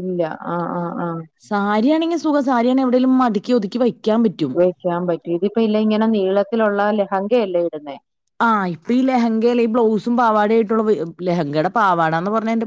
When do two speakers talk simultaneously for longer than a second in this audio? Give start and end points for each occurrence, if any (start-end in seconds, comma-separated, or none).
none